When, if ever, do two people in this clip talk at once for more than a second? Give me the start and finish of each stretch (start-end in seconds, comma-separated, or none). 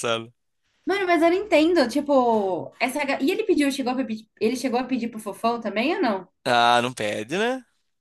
none